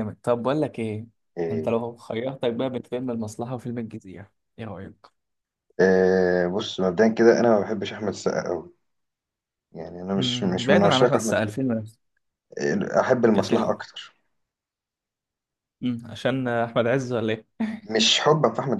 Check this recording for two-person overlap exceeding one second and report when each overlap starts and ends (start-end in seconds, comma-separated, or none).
10.2-11.4